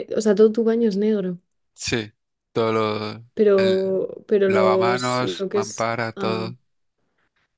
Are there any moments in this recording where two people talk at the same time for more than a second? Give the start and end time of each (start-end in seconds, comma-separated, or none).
4.5-6.5